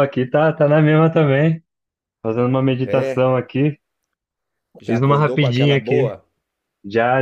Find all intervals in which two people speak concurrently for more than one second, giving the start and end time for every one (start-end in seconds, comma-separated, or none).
4.8-6.1